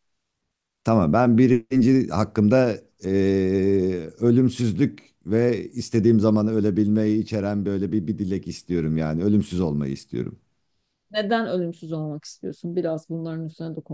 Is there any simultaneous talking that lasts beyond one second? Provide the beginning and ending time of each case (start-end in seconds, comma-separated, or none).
none